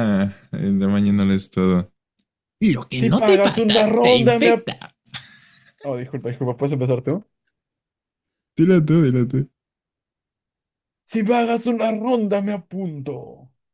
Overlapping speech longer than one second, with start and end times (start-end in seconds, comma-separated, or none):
3.0-4.7